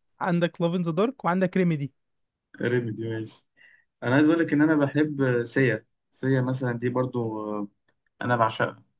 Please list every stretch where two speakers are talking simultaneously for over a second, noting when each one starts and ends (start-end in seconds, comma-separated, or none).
none